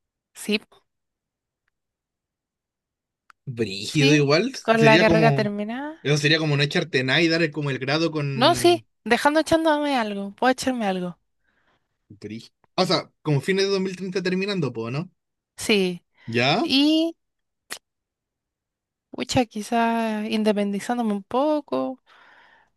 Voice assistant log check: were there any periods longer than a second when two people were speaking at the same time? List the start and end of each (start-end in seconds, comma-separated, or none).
3.9-5.5